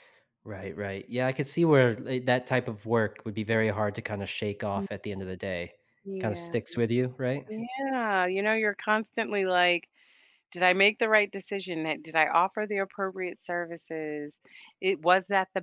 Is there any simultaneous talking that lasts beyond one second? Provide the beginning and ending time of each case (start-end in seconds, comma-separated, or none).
none